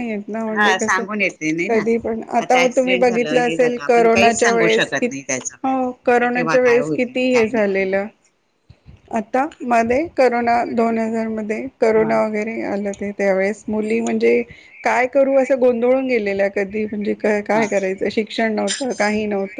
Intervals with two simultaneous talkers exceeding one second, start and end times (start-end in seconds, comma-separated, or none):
2.6-5.0, 6.2-8.1